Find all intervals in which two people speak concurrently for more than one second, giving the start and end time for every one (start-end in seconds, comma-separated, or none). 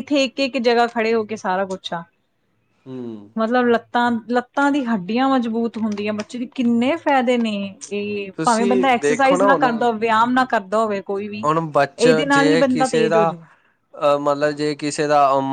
8.4-9.8